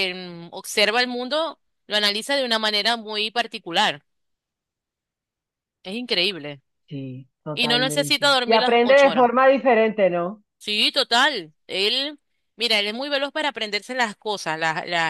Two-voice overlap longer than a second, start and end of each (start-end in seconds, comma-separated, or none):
7.5-9.3